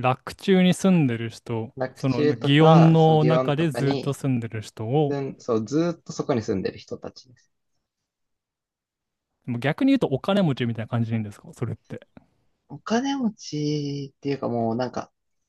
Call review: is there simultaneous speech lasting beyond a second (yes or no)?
yes